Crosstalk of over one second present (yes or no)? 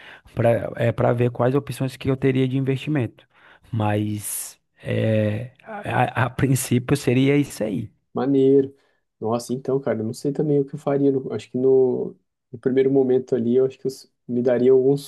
no